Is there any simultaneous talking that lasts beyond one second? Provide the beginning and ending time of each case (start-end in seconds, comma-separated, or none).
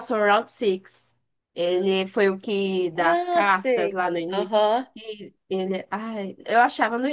2.9-4.6